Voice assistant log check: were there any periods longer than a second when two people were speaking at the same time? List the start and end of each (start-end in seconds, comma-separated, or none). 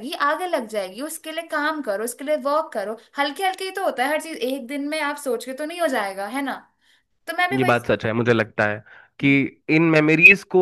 none